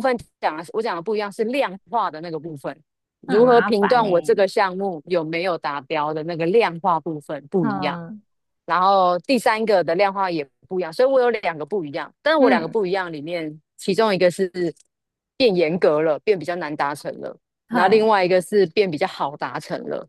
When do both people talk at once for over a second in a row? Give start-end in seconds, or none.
3.2-4.5